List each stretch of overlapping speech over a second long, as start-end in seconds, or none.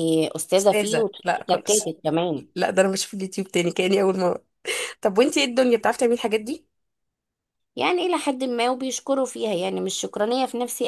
0.6-1.9